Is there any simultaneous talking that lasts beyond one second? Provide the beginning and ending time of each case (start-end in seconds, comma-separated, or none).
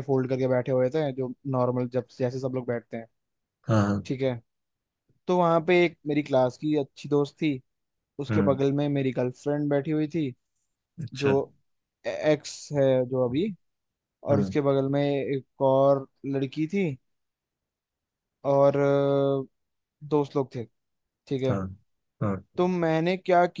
none